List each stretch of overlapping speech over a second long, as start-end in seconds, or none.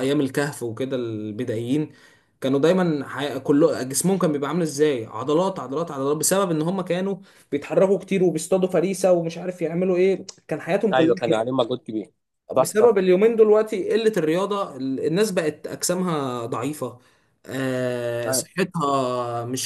none